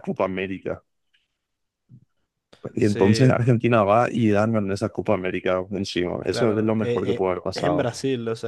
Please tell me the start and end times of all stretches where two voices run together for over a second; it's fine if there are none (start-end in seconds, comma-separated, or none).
6.2-7.9